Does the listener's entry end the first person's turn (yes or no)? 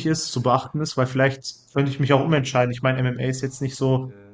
no